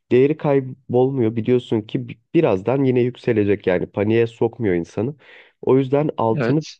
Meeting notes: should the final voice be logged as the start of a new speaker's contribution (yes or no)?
no